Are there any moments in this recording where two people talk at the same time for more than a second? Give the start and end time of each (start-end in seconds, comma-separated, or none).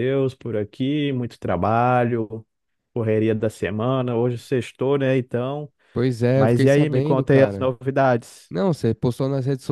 6.3-7.7